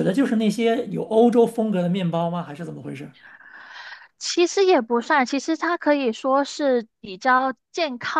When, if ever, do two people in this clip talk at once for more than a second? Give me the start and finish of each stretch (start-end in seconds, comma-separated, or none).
none